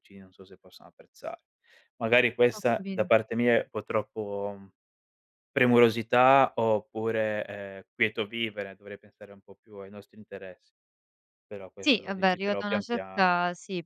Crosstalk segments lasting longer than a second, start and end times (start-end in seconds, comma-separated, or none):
11.8-13.3